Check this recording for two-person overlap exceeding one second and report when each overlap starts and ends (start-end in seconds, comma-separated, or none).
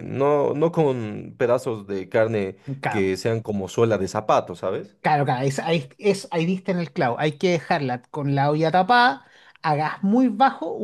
none